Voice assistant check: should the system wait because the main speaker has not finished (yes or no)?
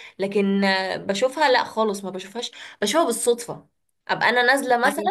yes